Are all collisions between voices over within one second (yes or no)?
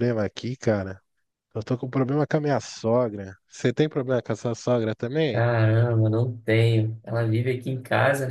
yes